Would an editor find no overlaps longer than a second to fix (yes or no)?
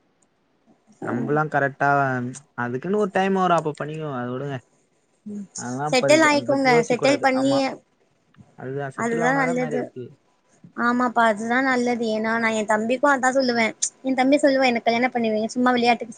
no